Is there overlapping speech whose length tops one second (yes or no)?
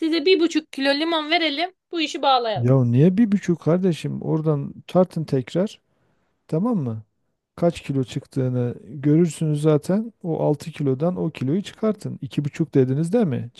no